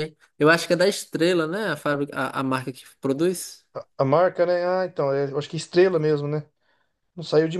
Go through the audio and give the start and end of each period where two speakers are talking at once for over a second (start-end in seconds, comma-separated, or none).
none